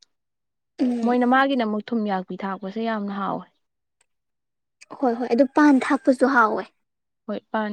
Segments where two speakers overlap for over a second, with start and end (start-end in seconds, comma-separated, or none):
none